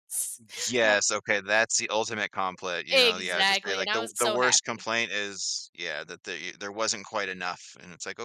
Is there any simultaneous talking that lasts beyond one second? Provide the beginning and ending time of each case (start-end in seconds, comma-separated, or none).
2.9-4.8